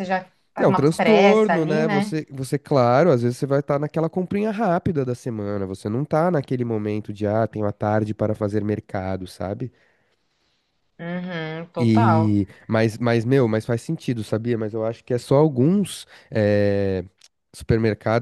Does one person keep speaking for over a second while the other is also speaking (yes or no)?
yes